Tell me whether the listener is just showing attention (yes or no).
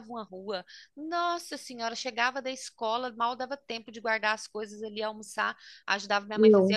yes